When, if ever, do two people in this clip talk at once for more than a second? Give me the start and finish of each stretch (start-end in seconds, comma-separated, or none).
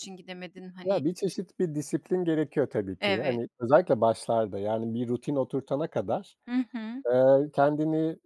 none